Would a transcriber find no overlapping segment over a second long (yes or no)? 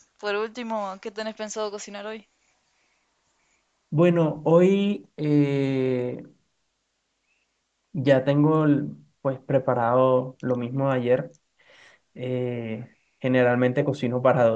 yes